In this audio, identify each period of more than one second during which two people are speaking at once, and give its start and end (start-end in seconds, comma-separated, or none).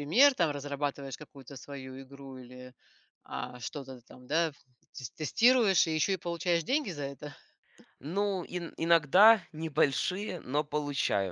none